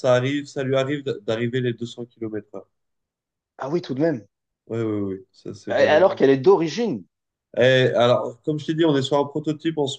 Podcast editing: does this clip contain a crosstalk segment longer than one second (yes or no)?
no